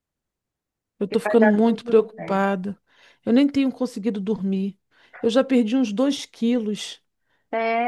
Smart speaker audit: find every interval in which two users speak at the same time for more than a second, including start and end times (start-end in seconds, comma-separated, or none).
1.1-2.5